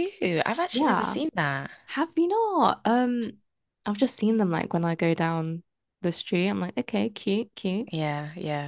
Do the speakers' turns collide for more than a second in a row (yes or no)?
no